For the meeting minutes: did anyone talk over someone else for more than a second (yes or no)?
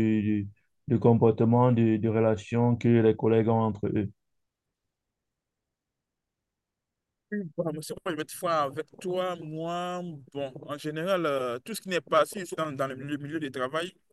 no